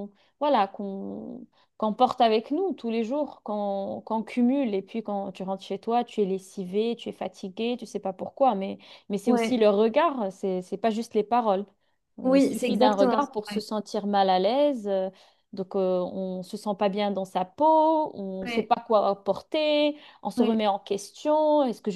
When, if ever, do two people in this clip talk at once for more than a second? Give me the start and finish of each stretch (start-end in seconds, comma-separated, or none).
12.2-13.6